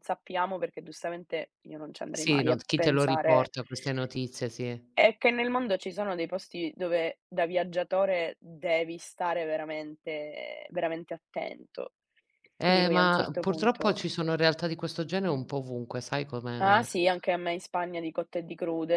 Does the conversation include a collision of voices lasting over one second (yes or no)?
yes